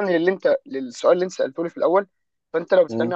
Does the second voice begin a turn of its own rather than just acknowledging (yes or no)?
no